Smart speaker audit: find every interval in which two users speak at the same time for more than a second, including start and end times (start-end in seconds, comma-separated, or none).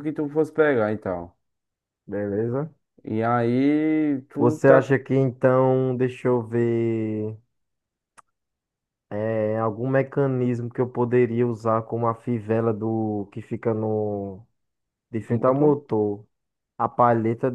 none